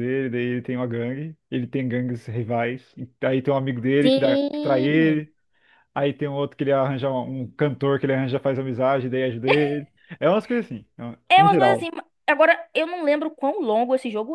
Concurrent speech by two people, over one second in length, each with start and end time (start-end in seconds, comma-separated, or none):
4.0-5.3